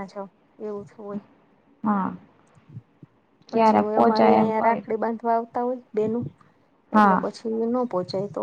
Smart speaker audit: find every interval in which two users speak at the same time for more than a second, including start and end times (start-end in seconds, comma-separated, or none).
3.5-4.8